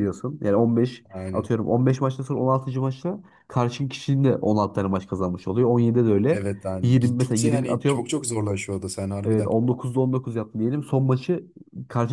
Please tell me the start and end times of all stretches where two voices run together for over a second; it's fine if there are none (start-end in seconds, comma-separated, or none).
6.3-8.1